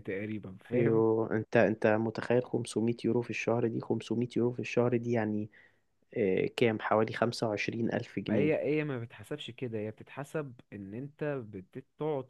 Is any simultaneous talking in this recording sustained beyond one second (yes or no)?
no